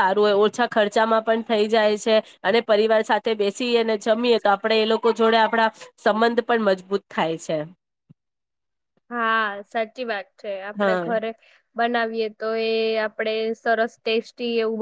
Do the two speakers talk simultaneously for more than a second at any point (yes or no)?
no